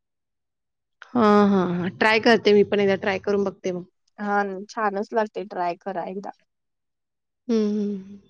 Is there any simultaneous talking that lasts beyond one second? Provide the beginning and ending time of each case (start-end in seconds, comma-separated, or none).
none